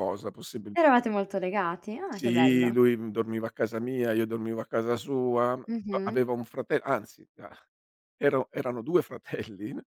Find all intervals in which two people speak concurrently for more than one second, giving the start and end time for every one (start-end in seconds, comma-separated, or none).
none